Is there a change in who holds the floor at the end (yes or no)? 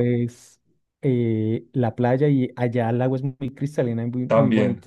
yes